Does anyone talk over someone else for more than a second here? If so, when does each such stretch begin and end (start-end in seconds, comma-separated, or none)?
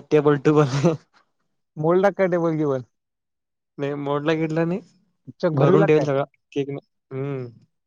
none